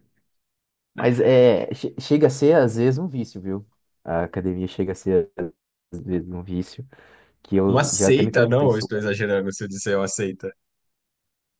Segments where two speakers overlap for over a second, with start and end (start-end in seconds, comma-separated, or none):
7.7-8.9